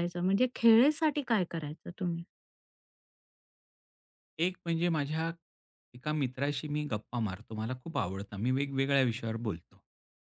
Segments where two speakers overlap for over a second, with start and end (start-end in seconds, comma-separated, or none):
none